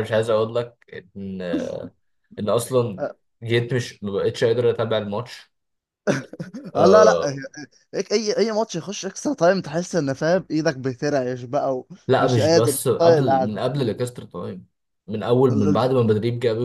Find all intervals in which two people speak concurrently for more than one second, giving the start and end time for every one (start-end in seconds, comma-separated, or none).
12.1-13.6